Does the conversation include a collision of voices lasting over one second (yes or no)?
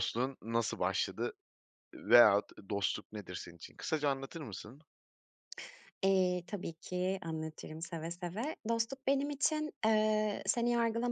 no